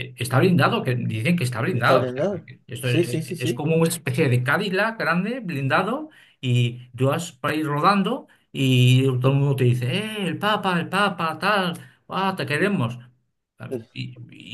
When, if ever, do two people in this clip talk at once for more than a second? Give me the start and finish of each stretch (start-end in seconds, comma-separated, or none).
1.7-3.7